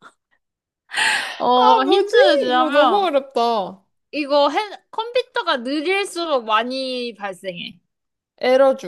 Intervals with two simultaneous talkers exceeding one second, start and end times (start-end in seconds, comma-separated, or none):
1.5-3.1